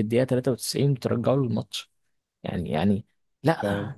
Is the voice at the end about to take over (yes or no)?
no